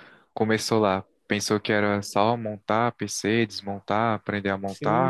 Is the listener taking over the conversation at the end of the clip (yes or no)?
yes